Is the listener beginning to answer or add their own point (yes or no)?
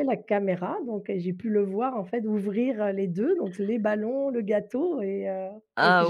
yes